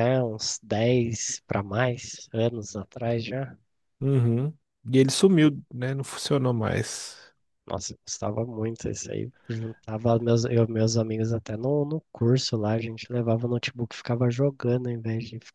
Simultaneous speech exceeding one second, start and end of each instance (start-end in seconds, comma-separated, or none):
none